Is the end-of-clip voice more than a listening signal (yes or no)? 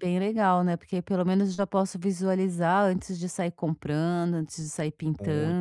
yes